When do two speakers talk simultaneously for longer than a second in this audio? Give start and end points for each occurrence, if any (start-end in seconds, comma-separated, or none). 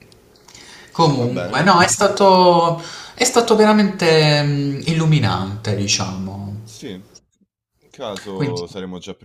none